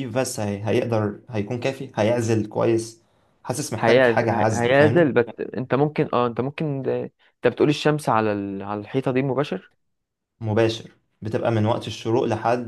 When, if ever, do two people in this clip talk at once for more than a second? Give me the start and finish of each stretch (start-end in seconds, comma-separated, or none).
3.8-5.1